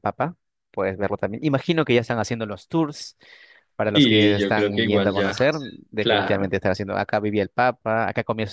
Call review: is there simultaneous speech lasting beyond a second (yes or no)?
yes